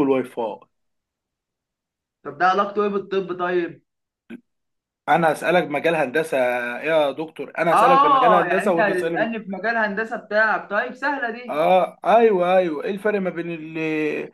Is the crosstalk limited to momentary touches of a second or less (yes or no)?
no